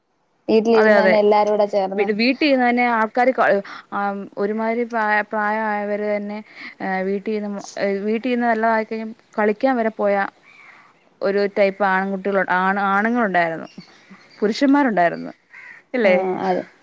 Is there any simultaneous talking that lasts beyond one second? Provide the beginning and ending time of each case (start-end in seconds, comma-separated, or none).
none